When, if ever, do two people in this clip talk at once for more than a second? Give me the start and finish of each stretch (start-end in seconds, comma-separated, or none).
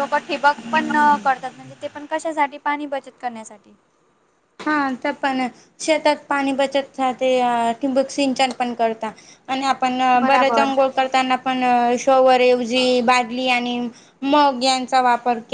none